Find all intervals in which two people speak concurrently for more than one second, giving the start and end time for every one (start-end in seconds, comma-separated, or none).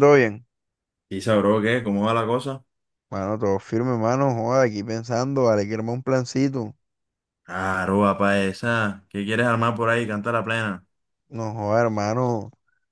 none